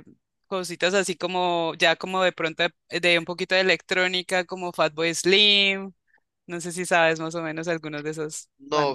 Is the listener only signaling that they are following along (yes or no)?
no